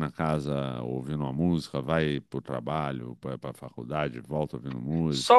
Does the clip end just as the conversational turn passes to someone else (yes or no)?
yes